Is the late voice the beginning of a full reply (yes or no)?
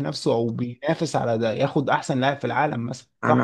yes